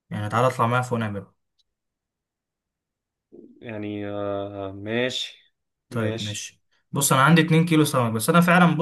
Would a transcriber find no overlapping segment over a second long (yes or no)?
yes